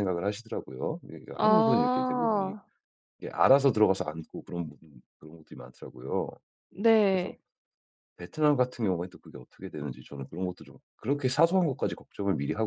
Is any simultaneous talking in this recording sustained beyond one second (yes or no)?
yes